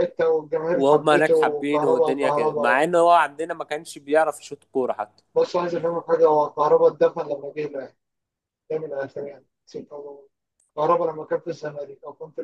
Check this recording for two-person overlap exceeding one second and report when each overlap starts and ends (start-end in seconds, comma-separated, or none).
0.7-2.9